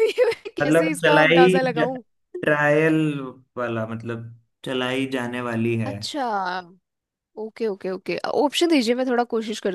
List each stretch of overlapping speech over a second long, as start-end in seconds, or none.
0.6-1.9